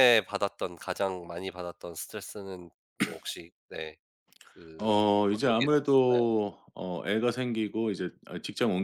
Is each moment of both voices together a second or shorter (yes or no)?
no